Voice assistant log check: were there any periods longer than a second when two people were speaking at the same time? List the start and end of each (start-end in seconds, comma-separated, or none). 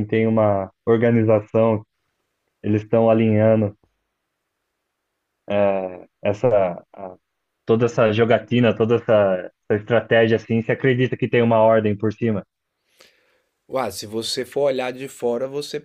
none